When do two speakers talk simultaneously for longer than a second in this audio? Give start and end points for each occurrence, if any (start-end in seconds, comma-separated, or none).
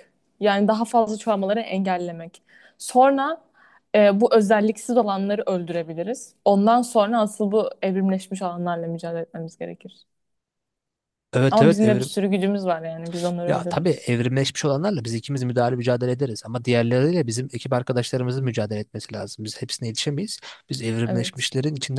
none